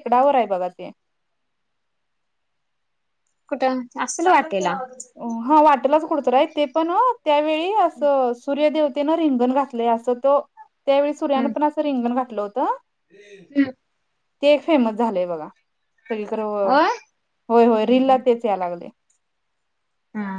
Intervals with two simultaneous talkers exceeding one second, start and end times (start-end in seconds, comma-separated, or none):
none